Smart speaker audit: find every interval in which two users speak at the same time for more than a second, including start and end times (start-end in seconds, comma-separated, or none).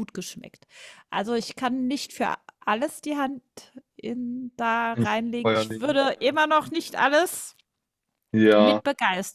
4.9-6.4